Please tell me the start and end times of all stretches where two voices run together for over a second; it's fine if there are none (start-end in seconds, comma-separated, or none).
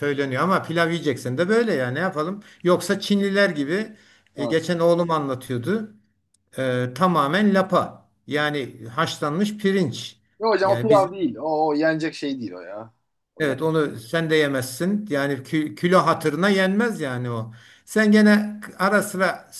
none